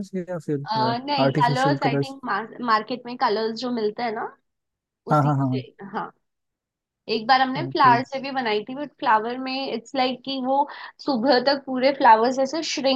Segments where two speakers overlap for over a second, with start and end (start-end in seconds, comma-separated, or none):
0.7-2.1